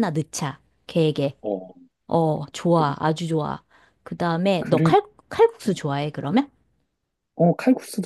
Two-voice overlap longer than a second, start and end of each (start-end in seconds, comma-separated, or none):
none